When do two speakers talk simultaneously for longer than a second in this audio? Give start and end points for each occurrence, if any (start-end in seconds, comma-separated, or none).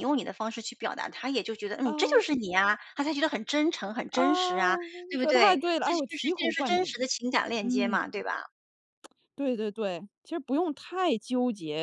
5.2-7.0